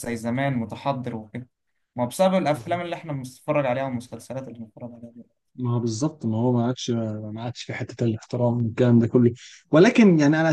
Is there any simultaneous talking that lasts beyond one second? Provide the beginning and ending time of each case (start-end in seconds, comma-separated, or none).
none